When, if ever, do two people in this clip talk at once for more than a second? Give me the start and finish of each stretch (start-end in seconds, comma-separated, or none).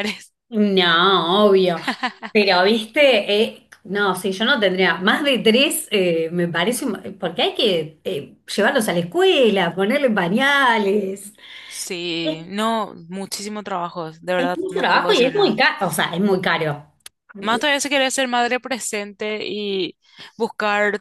14.4-15.6